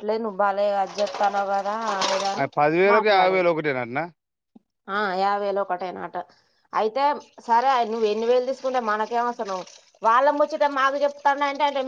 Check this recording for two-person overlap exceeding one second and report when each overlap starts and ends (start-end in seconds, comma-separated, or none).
none